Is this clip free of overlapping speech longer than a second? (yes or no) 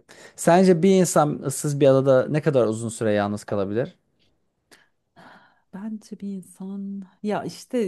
yes